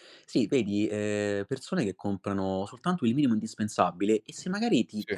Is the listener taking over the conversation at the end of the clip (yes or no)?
no